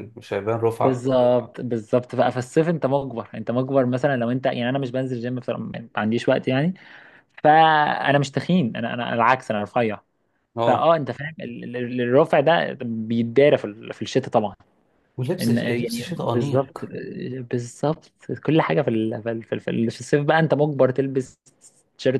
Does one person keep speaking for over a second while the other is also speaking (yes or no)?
yes